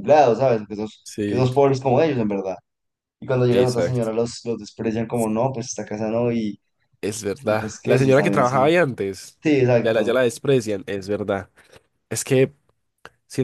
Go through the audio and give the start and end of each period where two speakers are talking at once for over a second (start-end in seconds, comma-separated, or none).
7.4-8.6